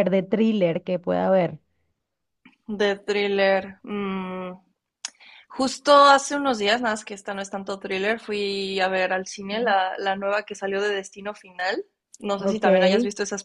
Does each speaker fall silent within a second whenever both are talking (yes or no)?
yes